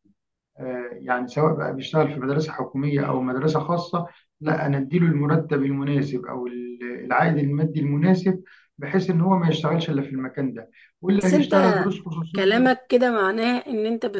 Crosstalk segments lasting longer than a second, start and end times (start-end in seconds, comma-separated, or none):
none